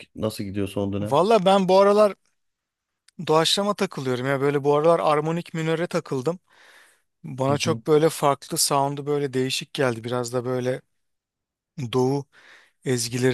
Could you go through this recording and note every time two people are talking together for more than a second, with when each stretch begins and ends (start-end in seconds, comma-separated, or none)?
none